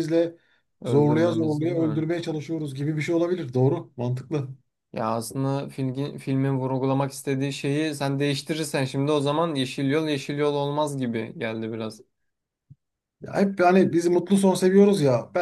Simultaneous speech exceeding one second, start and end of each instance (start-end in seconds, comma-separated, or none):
0.8-2.1